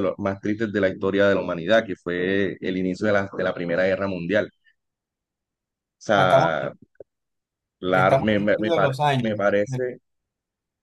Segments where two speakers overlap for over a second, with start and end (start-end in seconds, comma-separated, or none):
7.9-9.8